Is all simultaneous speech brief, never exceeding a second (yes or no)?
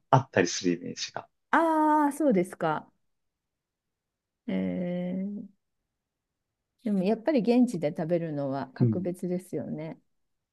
yes